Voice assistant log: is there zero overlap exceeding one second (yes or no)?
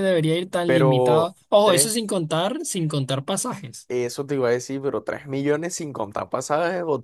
no